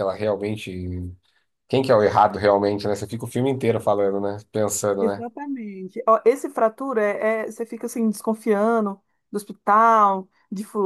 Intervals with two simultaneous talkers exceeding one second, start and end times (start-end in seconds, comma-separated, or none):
none